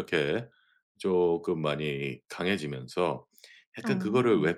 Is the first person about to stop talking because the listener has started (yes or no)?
no